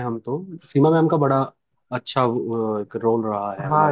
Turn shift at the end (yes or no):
yes